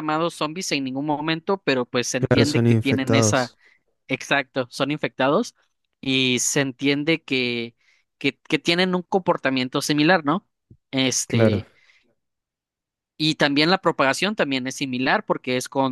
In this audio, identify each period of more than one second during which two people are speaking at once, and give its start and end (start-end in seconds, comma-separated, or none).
2.2-3.5